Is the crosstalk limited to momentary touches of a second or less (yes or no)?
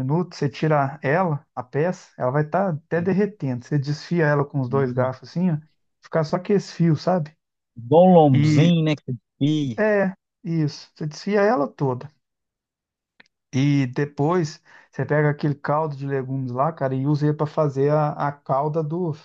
yes